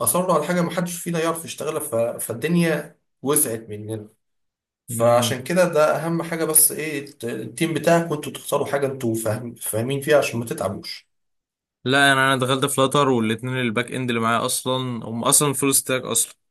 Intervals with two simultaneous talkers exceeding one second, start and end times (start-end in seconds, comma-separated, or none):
none